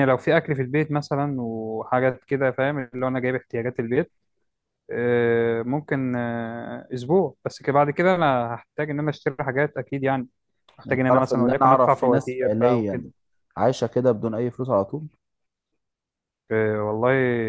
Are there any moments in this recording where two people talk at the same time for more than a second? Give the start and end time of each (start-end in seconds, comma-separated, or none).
10.8-13.0